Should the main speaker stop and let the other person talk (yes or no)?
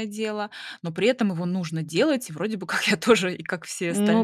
yes